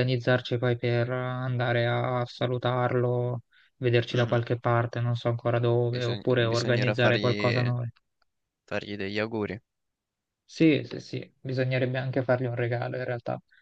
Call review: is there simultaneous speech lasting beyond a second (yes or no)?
yes